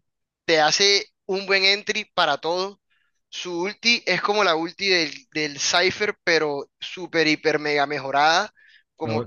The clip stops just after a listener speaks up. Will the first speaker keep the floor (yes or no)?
yes